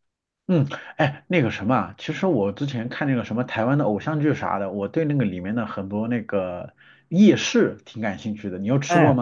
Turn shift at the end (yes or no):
yes